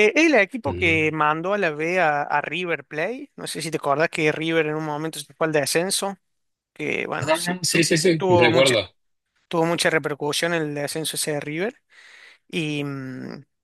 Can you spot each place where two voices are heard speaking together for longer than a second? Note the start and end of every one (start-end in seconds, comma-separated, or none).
7.2-8.8